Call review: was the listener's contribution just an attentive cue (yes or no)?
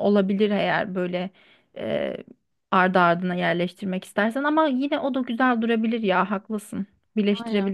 no